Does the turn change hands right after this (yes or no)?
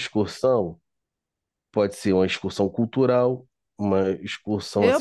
yes